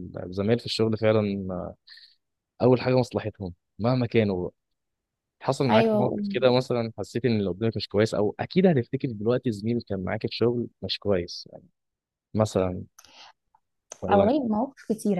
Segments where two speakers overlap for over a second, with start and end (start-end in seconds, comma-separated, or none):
none